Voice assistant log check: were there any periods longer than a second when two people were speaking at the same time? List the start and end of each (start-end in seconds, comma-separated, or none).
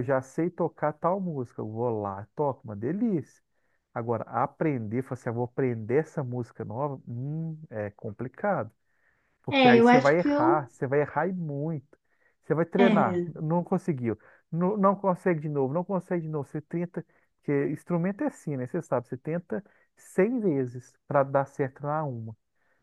9.5-10.7